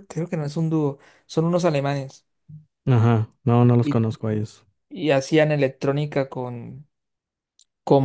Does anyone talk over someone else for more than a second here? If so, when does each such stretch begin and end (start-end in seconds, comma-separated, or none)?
none